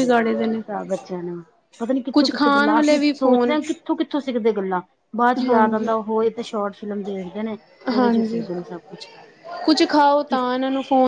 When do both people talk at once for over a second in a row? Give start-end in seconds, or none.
2.1-3.6